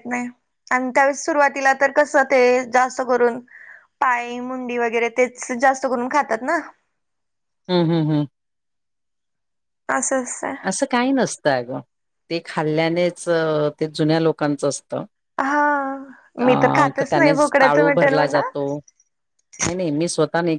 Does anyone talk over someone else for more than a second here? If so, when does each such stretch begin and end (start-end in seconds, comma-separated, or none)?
16.4-18.4